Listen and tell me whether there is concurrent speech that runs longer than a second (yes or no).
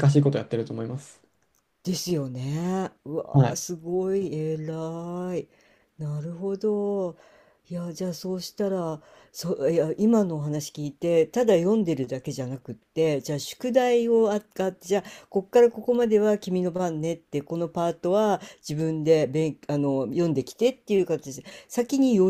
no